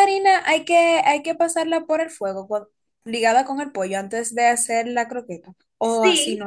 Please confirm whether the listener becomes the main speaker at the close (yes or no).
yes